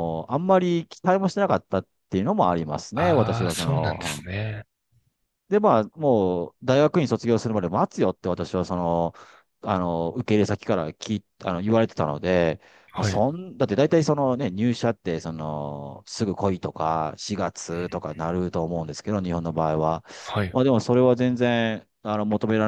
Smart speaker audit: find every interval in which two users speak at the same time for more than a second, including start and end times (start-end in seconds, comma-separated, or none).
2.9-4.2